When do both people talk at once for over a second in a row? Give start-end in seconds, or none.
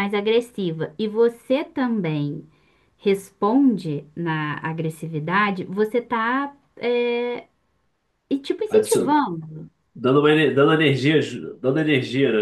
none